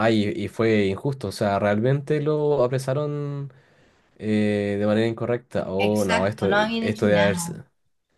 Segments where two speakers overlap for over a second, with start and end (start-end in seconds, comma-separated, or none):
5.8-7.5